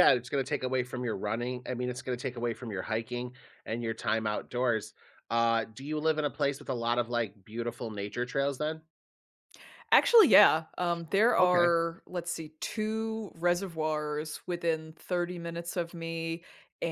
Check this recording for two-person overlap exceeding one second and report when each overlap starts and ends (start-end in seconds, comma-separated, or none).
none